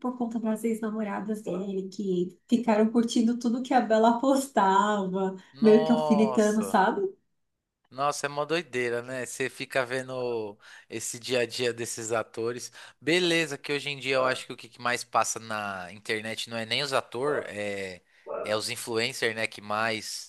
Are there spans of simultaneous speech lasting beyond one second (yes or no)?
yes